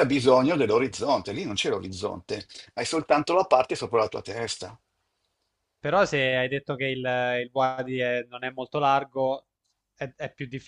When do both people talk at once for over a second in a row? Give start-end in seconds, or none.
none